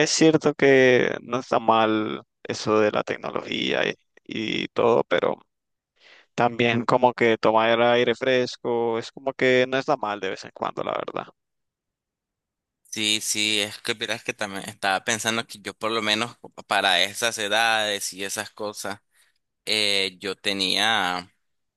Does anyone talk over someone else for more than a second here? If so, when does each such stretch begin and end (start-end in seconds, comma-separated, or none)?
none